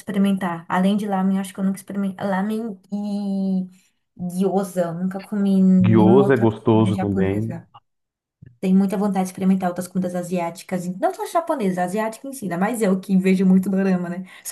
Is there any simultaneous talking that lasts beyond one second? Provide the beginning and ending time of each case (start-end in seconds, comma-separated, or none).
5.8-7.6